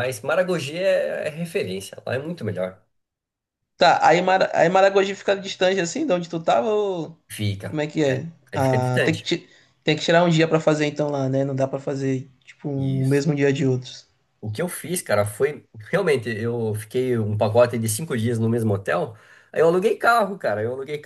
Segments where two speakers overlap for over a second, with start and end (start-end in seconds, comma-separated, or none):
7.6-9.3